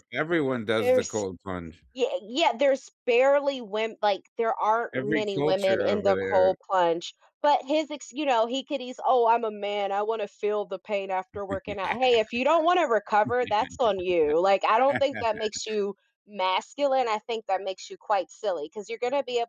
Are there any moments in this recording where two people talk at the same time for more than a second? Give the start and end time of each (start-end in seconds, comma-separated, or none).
5.0-6.5